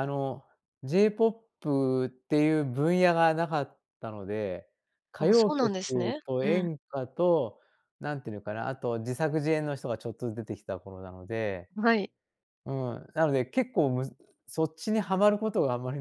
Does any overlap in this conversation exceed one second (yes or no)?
yes